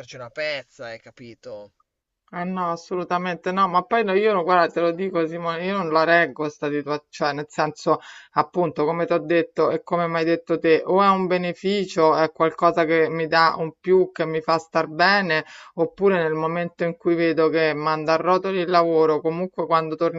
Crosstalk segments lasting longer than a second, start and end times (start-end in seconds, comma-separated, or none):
none